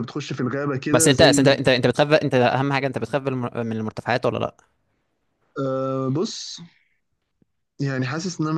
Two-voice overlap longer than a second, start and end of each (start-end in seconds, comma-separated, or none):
none